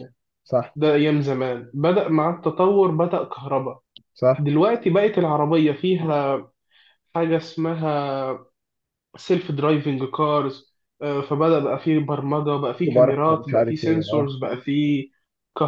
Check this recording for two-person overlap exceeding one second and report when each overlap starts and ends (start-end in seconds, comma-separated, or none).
12.8-14.3